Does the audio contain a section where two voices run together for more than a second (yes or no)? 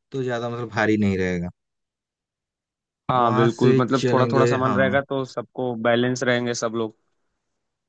yes